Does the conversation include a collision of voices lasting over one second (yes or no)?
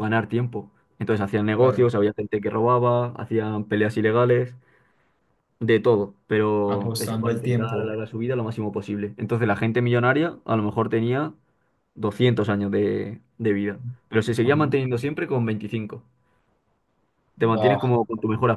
yes